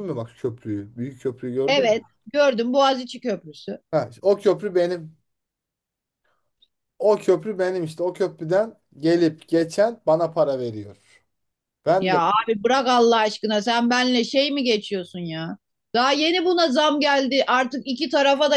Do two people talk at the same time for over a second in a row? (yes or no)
no